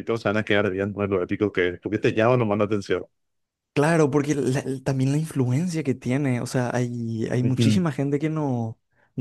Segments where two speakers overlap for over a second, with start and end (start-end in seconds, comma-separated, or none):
none